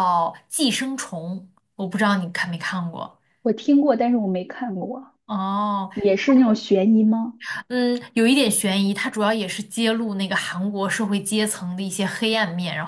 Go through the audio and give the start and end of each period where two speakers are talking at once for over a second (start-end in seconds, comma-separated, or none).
none